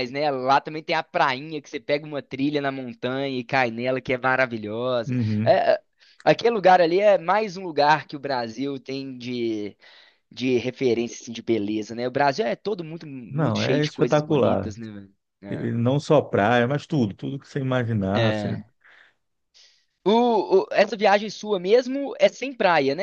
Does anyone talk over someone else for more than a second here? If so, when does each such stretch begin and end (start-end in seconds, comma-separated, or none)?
13.3-14.7